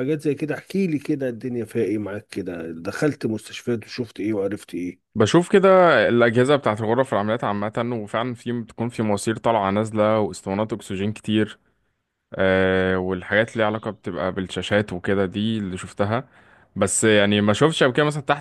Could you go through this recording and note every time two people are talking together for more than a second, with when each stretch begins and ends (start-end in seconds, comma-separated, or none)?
none